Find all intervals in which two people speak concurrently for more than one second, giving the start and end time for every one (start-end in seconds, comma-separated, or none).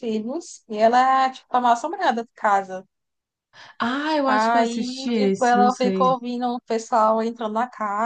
4.2-6.1